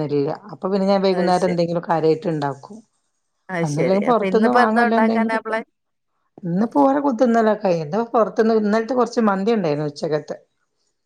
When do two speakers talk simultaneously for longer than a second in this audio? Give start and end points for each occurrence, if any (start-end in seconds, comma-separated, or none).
3.6-5.5